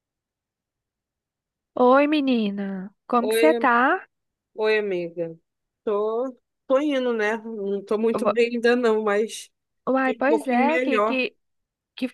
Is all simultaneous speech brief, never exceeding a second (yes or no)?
no